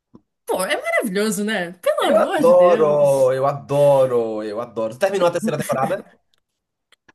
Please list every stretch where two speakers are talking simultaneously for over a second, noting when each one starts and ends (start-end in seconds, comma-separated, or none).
2.0-3.4